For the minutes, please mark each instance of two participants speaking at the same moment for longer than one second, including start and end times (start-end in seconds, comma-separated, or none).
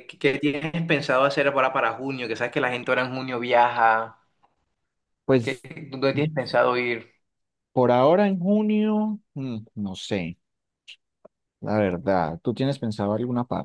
none